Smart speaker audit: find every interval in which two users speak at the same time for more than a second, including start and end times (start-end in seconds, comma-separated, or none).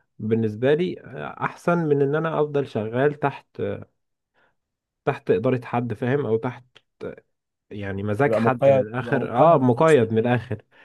8.3-10.3